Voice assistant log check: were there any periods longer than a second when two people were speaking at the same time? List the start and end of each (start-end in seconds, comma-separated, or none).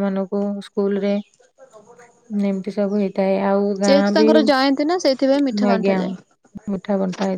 none